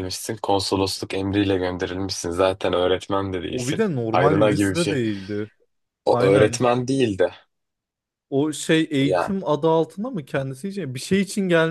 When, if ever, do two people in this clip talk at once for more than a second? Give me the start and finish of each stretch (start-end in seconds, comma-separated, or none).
3.5-5.0